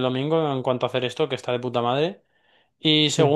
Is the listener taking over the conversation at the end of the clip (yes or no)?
no